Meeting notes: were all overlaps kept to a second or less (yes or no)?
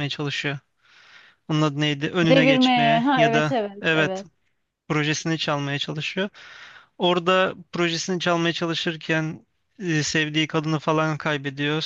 no